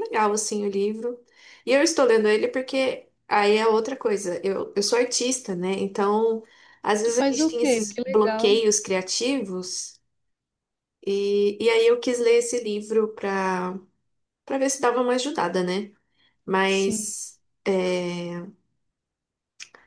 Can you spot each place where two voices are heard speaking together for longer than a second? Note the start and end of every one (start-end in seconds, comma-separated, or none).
7.0-8.5